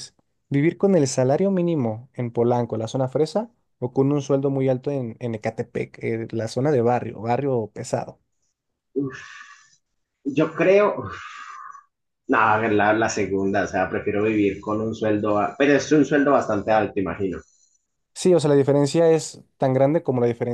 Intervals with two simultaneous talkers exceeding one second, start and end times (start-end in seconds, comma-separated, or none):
none